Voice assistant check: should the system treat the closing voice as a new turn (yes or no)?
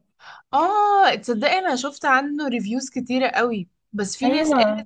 no